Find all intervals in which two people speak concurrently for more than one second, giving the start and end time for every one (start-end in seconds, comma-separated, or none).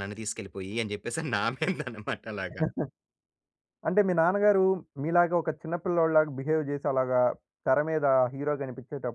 none